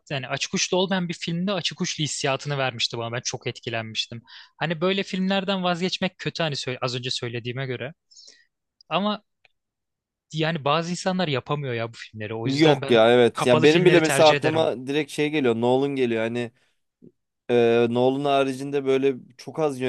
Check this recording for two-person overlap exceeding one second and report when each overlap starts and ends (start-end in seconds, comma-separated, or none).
12.4-14.7